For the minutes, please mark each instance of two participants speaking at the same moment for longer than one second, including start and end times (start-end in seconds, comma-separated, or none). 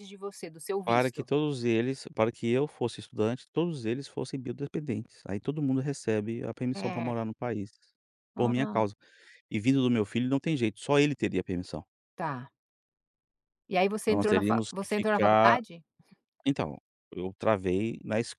14.0-15.6